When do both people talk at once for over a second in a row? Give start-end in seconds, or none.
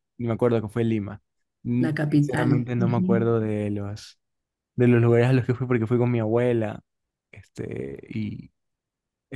1.8-3.4